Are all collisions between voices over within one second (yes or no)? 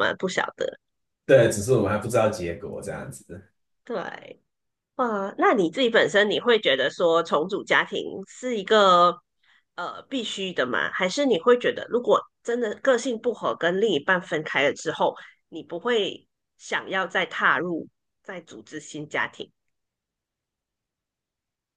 yes